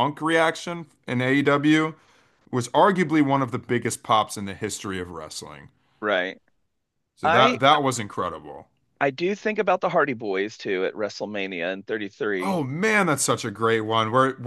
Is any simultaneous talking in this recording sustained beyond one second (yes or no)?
no